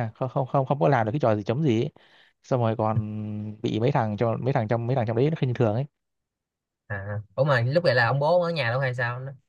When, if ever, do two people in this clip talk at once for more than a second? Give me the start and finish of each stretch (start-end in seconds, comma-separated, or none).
none